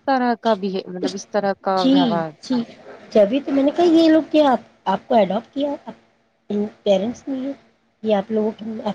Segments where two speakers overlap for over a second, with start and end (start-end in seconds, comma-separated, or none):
none